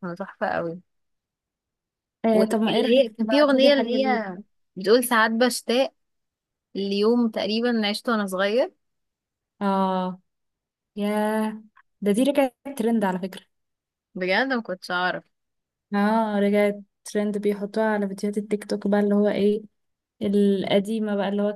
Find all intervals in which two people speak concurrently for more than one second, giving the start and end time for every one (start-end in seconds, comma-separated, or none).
2.3-4.3